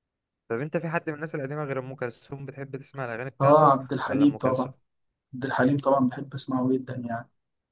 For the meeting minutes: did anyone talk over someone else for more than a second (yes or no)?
yes